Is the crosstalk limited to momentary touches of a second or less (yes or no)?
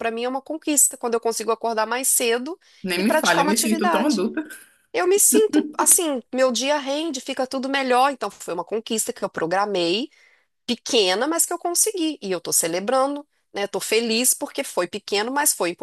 no